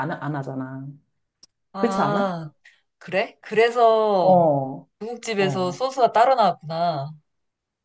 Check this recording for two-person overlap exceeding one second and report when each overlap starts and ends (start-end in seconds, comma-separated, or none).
none